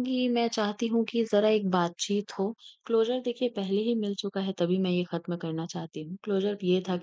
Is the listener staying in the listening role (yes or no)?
yes